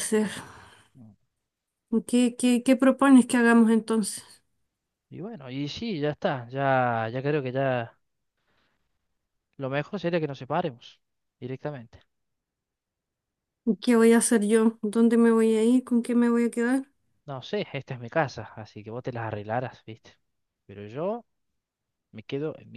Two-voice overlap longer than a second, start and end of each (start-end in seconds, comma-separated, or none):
none